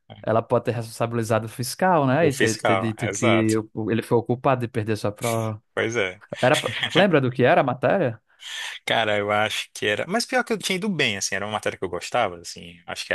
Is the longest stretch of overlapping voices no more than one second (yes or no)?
no